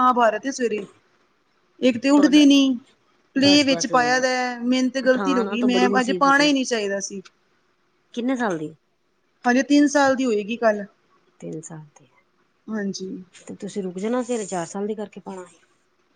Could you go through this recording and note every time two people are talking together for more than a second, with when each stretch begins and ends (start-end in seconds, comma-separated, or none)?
5.0-6.5